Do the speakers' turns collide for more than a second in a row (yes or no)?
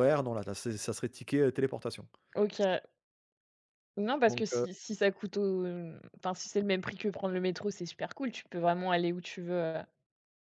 no